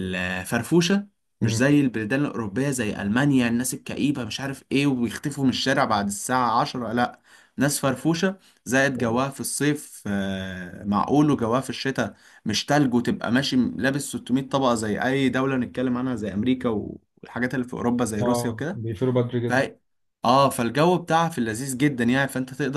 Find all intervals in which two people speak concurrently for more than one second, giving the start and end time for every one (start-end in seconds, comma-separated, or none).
none